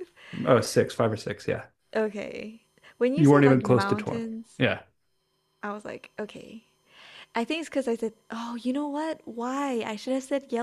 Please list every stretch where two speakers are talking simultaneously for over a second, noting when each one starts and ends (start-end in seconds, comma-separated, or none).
3.1-4.6